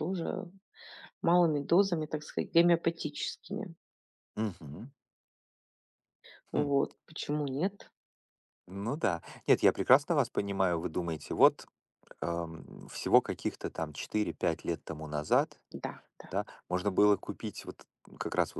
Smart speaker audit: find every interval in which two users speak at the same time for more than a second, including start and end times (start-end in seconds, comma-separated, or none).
none